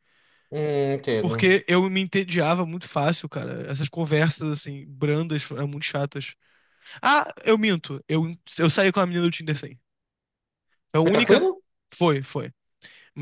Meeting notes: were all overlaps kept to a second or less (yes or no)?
yes